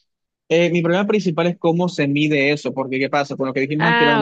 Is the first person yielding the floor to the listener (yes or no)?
no